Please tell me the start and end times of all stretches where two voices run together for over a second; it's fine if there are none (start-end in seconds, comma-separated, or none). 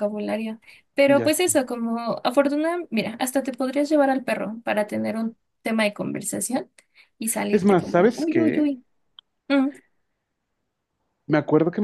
7.5-8.7